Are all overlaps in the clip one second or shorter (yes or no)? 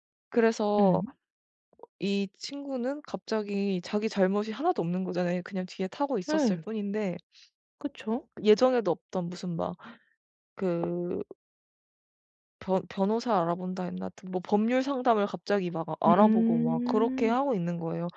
no